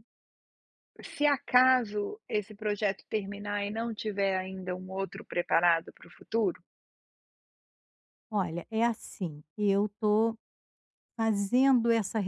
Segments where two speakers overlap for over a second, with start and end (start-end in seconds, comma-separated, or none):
none